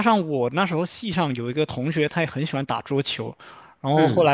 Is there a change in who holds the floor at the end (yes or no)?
no